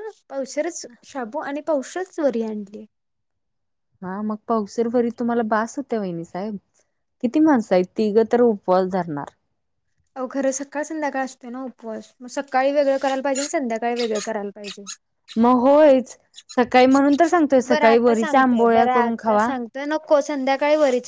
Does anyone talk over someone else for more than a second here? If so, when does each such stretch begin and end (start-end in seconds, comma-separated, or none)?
17.7-19.5